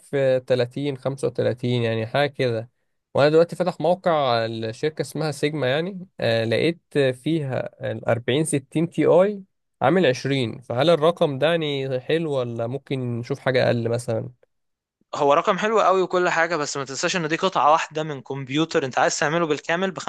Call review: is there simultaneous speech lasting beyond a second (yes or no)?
no